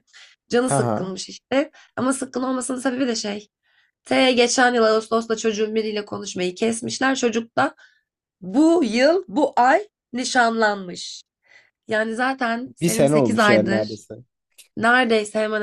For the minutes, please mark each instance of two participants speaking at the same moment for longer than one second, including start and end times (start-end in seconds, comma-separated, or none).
12.8-14.0